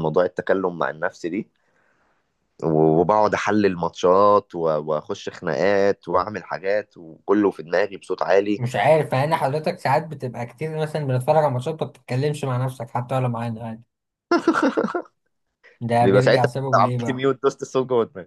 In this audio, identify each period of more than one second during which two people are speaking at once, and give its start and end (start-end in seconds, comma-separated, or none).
16.0-17.3